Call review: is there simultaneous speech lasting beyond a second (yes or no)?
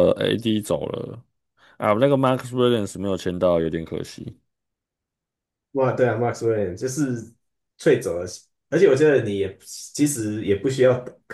no